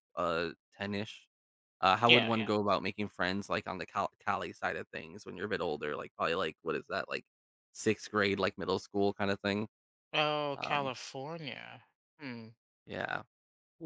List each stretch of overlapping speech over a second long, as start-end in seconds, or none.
none